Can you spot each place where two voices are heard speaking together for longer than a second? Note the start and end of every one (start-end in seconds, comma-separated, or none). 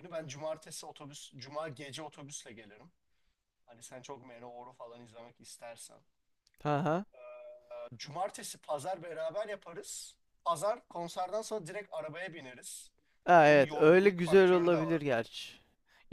13.4-15.0